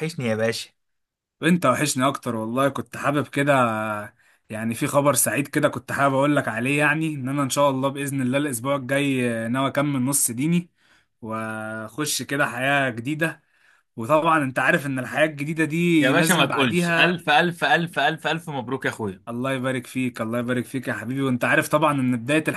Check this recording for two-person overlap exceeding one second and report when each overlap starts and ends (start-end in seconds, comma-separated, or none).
16.0-17.2